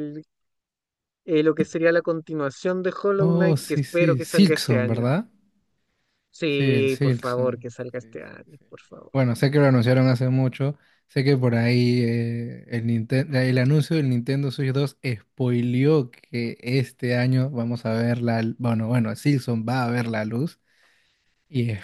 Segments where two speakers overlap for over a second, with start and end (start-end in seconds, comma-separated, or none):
3.2-5.1, 6.5-8.6